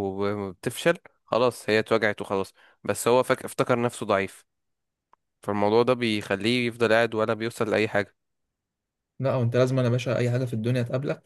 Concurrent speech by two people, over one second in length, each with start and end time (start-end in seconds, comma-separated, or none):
none